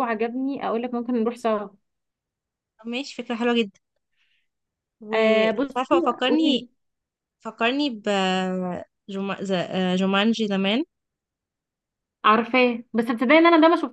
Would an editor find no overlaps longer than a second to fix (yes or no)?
no